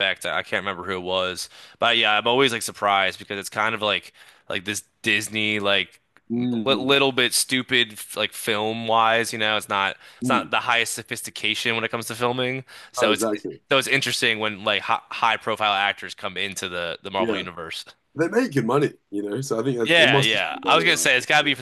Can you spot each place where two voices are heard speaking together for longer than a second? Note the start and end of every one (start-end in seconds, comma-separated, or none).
19.8-21.1